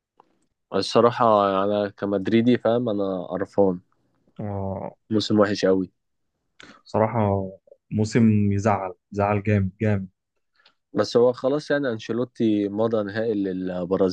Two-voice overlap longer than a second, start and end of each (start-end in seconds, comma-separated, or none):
none